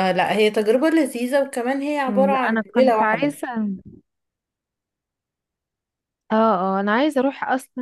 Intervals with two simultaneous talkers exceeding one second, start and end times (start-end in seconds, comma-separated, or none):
2.1-3.4